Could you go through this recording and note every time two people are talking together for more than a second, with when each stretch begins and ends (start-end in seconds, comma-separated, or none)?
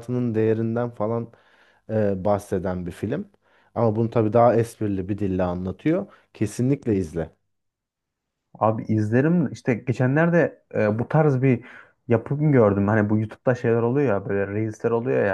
none